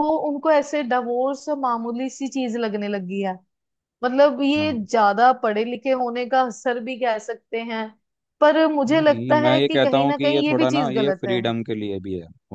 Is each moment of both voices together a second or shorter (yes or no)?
no